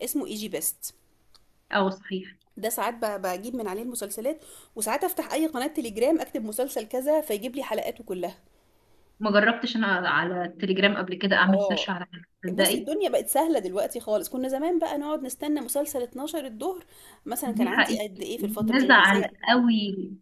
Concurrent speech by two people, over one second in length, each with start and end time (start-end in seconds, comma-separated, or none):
17.4-19.3